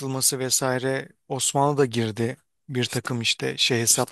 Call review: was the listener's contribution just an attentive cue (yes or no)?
no